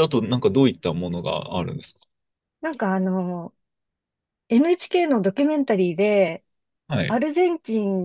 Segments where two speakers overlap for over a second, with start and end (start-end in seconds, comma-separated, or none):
none